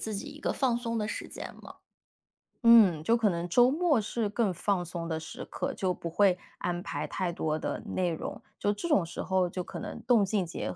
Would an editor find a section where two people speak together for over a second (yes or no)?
no